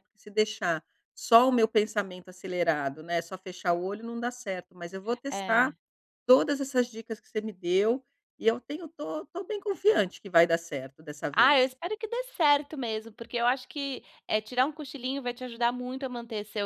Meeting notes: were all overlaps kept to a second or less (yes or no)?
yes